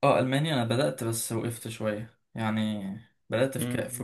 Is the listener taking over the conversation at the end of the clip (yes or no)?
no